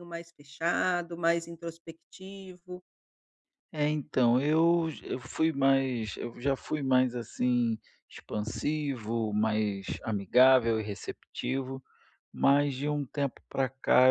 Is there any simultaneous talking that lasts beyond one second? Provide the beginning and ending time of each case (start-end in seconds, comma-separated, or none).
none